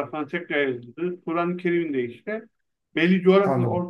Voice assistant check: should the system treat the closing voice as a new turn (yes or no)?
no